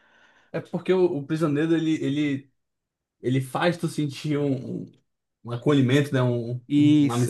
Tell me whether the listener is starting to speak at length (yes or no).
yes